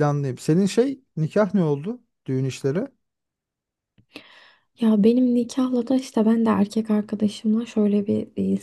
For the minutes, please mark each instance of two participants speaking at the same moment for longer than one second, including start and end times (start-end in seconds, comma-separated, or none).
none